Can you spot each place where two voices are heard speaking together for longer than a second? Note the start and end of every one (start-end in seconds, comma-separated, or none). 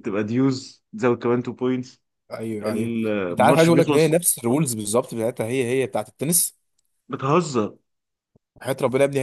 2.6-4.2